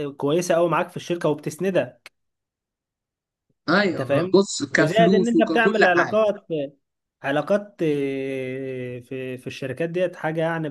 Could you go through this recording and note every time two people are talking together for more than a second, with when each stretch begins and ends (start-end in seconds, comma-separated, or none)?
3.9-6.2